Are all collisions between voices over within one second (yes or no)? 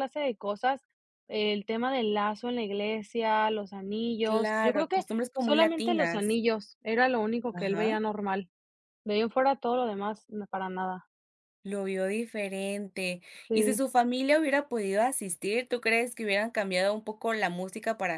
no